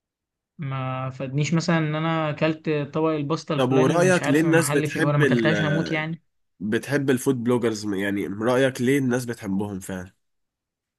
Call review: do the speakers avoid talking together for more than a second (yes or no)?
no